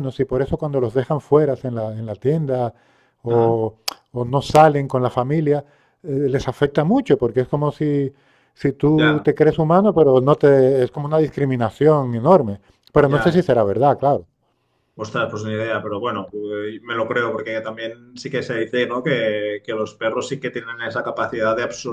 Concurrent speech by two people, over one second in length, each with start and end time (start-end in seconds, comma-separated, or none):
none